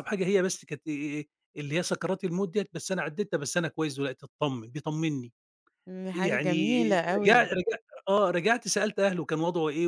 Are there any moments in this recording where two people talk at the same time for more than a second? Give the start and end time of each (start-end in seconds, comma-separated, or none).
none